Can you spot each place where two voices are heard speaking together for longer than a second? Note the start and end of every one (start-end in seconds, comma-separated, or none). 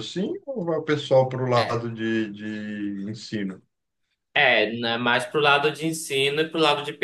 none